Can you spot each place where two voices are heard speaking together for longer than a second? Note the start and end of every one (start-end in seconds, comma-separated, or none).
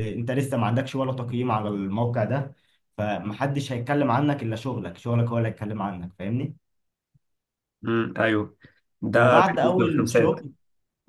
9.1-10.3